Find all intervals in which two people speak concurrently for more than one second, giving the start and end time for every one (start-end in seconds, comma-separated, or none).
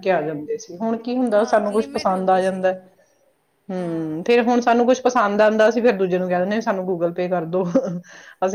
1.3-2.7